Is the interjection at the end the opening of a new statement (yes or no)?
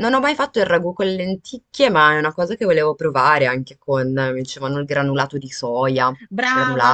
yes